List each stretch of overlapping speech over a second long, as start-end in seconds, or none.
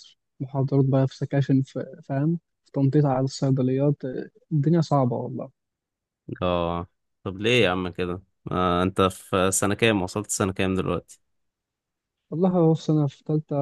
none